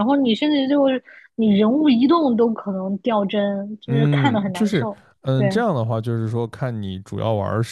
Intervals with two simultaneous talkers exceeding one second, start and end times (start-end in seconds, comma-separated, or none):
3.9-5.5